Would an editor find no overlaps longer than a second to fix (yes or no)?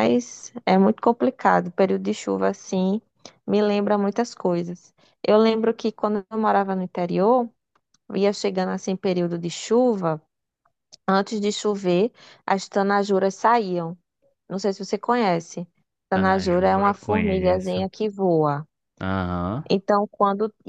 no